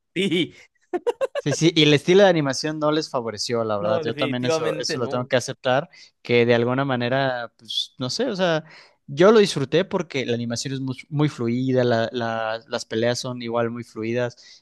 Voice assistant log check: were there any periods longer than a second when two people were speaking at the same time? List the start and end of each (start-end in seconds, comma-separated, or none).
3.8-5.3